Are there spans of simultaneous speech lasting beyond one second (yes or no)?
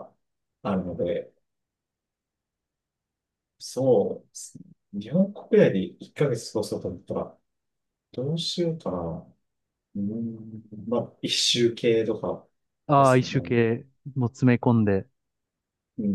no